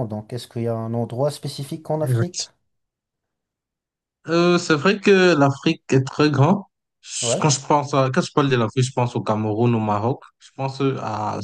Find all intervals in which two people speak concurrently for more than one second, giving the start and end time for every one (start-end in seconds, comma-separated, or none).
none